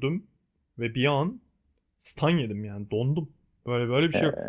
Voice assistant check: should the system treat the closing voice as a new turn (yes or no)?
no